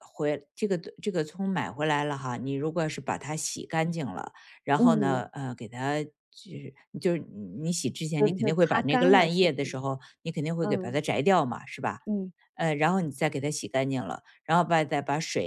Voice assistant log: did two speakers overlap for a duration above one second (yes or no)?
yes